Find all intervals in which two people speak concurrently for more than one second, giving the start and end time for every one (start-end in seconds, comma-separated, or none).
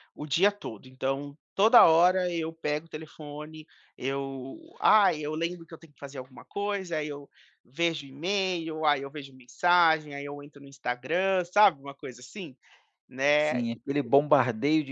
none